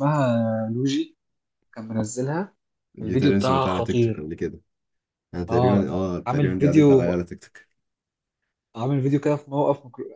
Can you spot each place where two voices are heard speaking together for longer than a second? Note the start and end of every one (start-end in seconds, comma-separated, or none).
3.0-4.3, 5.5-7.1